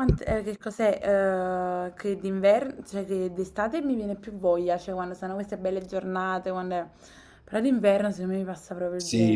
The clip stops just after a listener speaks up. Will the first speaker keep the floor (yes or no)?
no